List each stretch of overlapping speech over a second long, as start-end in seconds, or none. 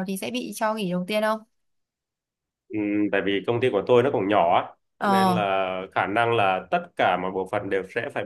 none